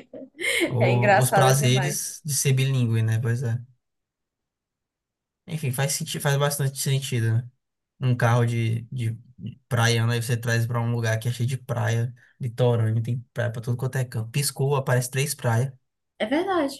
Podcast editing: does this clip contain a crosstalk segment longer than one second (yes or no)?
yes